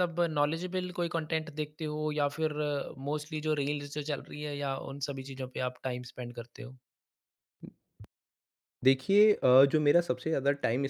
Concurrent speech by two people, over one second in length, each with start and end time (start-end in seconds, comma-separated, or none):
none